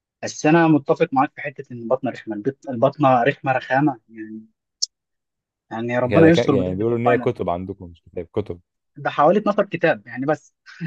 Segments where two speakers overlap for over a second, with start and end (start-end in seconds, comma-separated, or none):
6.1-7.3